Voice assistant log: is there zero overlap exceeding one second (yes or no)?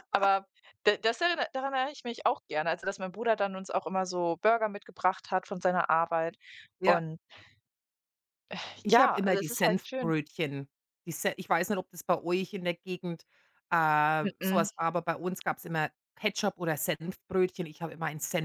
no